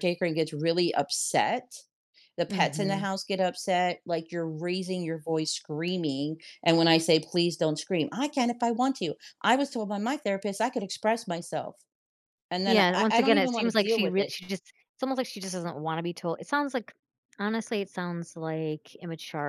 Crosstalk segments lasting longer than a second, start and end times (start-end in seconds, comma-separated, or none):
12.7-14.3